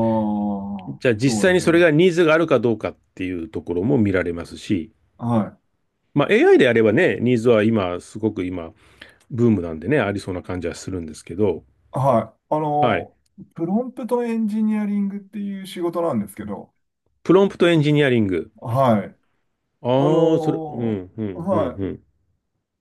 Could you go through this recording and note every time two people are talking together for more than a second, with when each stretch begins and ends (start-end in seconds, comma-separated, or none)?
19.9-21.8